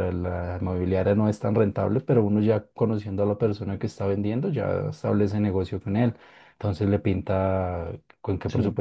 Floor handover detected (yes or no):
no